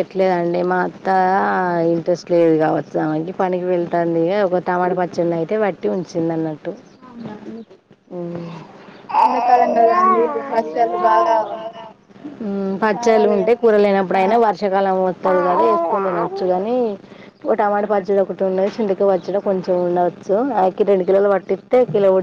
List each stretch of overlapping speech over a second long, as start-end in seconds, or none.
12.9-14.3